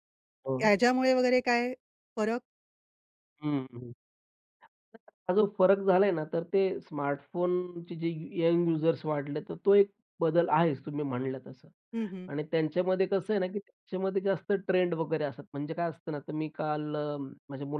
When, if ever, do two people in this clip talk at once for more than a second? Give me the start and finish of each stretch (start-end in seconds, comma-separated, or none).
none